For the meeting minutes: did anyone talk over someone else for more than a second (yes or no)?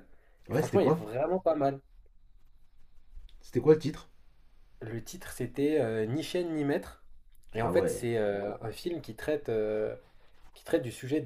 no